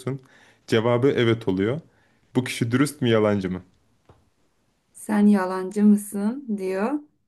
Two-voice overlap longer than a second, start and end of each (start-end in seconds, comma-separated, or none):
none